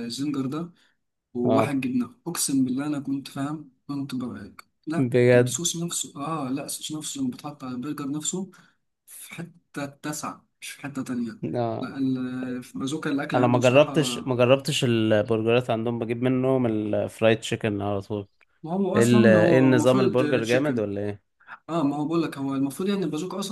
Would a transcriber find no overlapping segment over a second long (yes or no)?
no